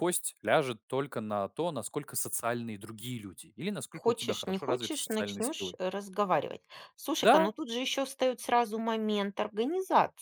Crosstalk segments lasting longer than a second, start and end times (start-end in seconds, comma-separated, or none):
3.9-5.8